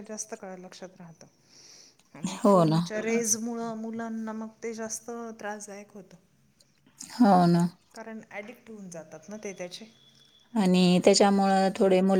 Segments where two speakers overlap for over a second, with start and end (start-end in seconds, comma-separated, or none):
none